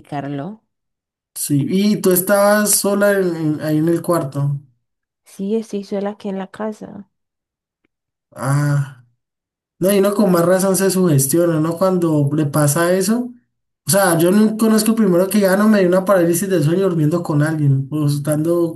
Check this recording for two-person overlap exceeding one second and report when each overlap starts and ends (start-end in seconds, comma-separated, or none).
none